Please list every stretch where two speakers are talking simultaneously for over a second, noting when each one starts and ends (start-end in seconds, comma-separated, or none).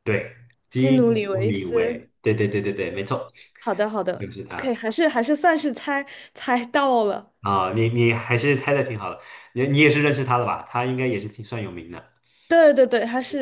0.7-2.1